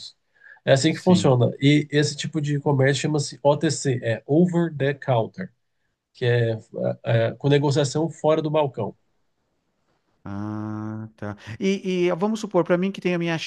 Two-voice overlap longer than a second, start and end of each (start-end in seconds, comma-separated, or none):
none